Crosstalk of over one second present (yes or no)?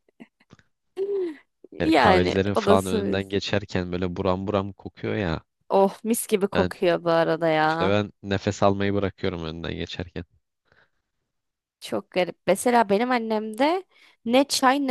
yes